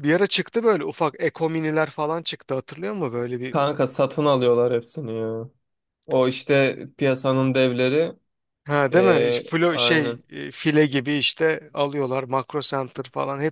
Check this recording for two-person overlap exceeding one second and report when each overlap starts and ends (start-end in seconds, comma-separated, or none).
8.9-10.2